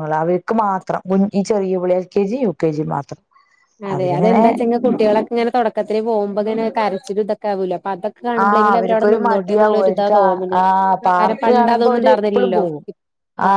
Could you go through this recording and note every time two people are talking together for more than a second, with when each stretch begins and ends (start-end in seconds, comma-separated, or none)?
11.2-12.6